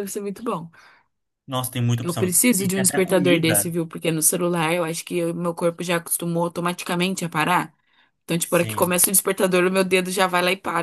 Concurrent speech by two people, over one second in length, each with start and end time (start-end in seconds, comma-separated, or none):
2.0-3.7